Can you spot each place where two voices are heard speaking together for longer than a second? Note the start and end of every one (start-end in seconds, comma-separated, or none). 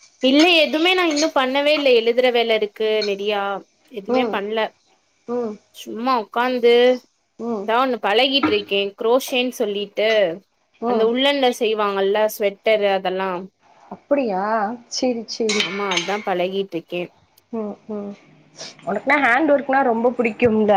none